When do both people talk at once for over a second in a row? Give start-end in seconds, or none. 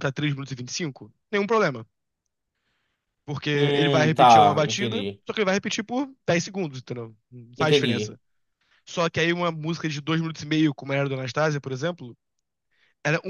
3.5-5.2